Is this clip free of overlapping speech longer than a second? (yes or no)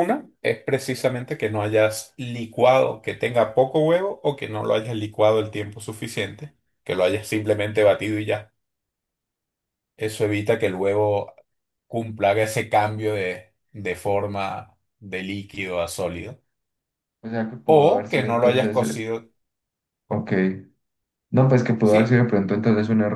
no